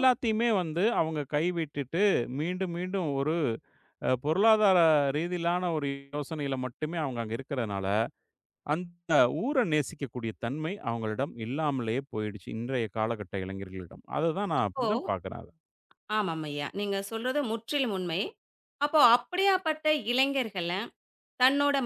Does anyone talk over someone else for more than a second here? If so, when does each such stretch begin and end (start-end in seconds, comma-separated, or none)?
none